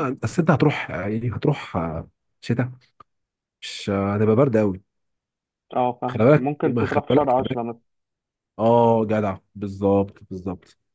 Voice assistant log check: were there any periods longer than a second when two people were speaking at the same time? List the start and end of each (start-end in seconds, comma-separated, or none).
6.1-7.6